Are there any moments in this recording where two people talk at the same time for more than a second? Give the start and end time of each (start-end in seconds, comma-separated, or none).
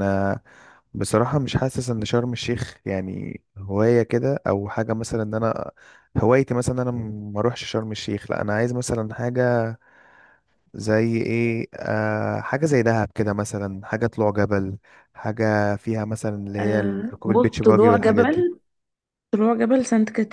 16.6-18.5